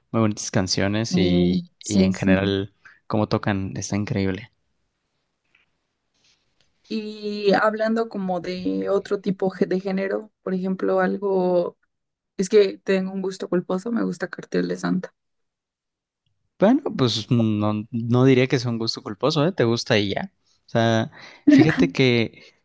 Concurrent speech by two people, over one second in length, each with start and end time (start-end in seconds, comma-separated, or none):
1.1-2.5